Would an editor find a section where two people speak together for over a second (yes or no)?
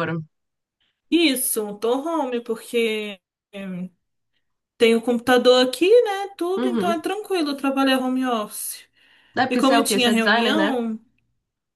yes